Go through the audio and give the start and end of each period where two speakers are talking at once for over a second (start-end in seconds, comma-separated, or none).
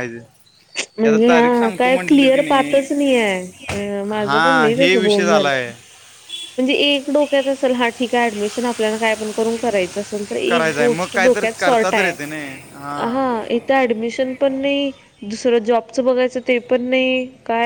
4.2-5.5, 10.5-12.2